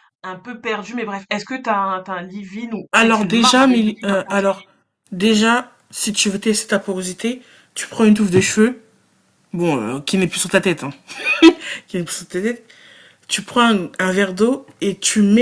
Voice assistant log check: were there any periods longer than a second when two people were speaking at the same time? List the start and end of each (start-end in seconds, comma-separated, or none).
2.9-4.7